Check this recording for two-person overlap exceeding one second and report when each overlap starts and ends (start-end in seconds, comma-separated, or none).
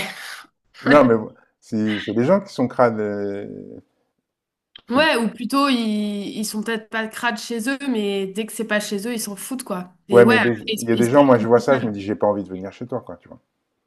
10.1-11.8